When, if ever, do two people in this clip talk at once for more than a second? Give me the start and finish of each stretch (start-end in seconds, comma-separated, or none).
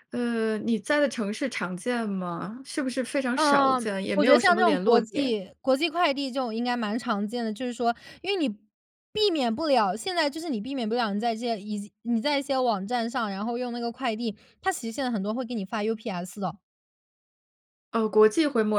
3.4-5.4